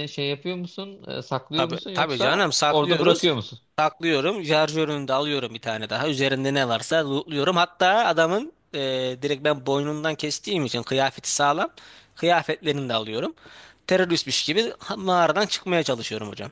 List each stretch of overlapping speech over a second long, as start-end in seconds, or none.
1.6-3.3